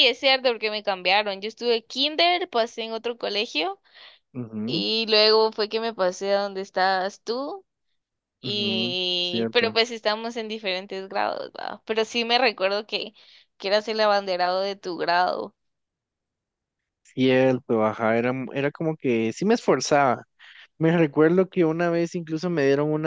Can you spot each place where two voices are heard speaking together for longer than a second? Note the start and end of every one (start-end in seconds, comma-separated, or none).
8.4-9.8